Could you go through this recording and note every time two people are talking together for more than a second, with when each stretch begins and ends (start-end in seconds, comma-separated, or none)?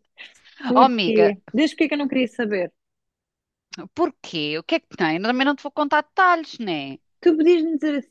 none